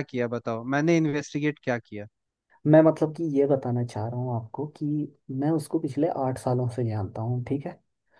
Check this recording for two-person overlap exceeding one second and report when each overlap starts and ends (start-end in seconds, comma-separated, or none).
none